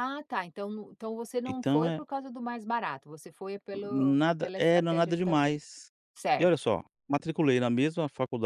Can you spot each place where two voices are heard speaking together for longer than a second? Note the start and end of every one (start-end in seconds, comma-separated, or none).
3.8-5.6